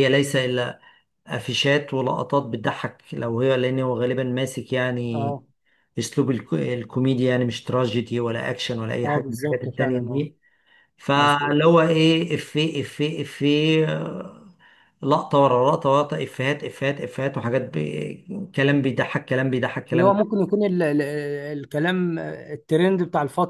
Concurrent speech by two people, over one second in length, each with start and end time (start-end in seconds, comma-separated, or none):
9.0-10.3